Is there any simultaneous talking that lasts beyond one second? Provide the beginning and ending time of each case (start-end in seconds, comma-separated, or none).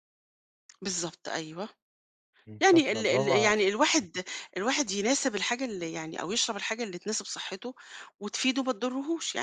2.6-4.1